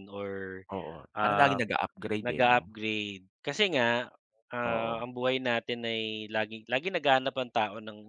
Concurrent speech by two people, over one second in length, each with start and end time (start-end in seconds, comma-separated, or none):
none